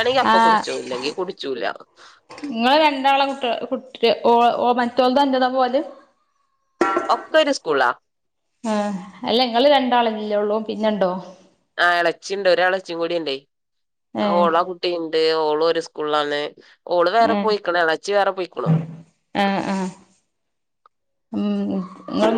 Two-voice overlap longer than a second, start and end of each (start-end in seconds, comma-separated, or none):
none